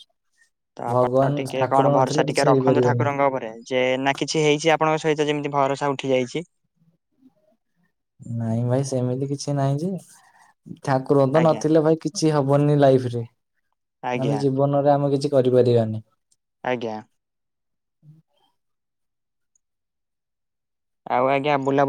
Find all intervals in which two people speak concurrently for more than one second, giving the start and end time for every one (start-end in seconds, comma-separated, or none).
0.9-3.0